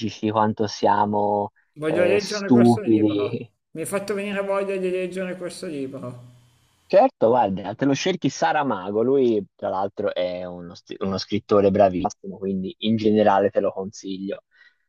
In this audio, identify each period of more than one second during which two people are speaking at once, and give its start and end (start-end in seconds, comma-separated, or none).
1.7-3.5